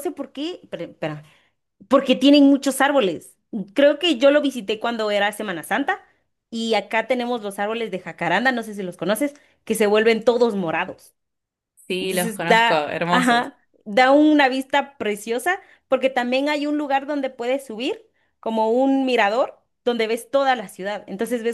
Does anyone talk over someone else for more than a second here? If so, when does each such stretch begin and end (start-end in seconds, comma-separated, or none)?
12.0-13.5